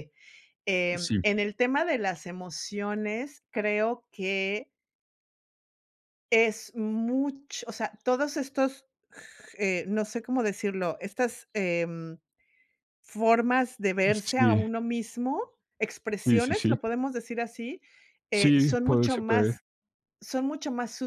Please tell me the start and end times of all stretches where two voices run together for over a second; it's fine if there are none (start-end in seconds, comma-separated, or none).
18.3-19.6